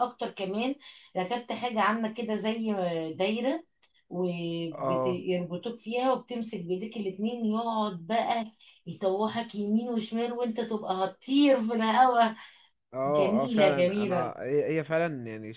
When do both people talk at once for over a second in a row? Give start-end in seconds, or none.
13.1-14.3